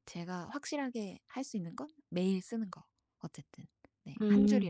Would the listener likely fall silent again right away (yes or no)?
no